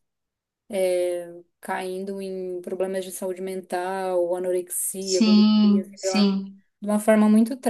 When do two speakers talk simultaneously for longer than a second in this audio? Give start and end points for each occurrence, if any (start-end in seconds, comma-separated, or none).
5.0-6.2